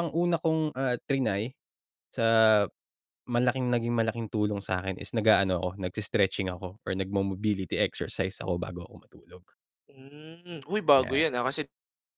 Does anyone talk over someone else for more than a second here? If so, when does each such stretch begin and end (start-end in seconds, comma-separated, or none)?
none